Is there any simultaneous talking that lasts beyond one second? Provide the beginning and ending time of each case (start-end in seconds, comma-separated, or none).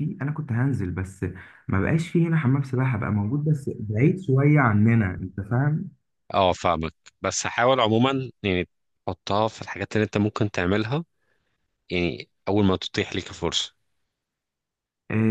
none